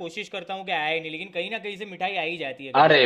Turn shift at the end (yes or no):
yes